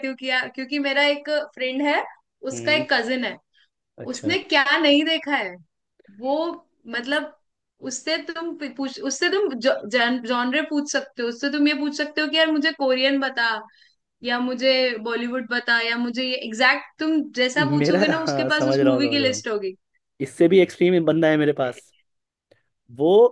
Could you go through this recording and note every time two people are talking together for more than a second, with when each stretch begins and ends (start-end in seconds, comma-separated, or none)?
17.8-19.4